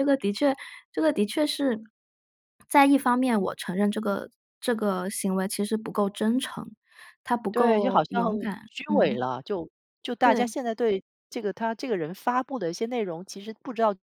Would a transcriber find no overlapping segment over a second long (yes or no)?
no